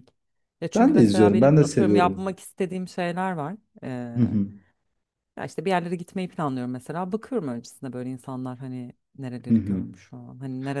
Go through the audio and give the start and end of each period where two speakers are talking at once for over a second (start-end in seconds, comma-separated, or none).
0.7-2.3